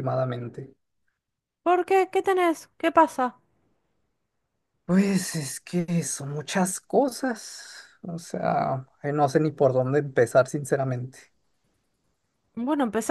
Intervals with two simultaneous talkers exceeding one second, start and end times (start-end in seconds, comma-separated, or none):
none